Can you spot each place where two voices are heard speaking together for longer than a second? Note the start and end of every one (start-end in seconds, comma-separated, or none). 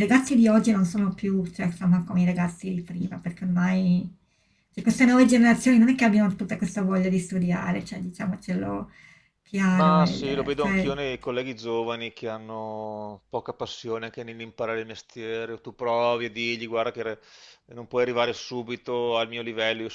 9.7-10.9